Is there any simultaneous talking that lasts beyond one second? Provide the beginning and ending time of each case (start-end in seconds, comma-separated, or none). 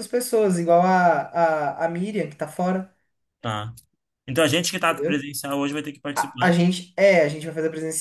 none